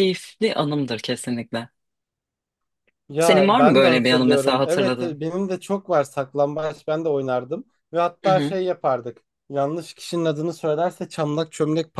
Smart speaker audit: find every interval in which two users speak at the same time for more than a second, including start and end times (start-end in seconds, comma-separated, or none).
3.2-5.2